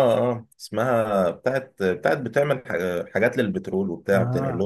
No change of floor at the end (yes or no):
no